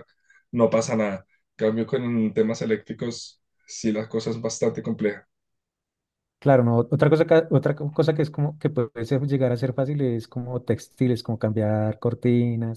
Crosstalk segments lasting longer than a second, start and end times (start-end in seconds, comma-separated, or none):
none